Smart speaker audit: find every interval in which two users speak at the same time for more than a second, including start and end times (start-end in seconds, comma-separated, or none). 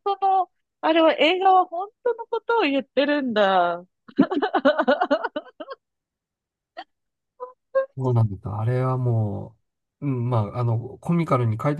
none